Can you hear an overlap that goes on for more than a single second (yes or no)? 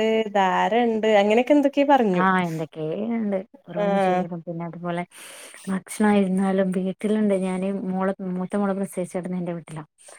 no